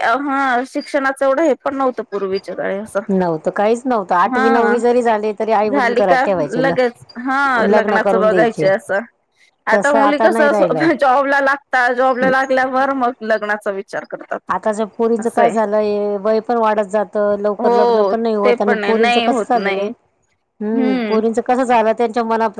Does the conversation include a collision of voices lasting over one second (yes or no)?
yes